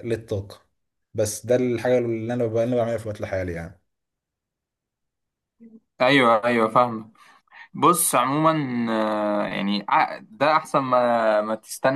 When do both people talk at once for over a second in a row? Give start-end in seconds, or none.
none